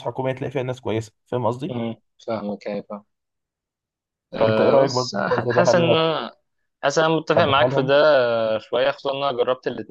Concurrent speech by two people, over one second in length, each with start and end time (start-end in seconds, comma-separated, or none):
4.4-6.2